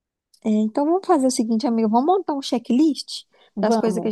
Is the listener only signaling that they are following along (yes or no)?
yes